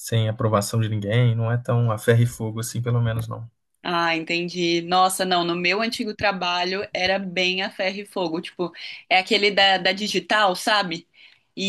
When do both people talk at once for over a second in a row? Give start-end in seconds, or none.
none